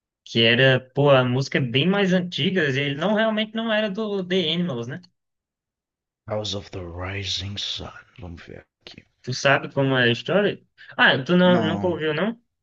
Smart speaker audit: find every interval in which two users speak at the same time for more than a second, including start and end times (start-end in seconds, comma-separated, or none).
none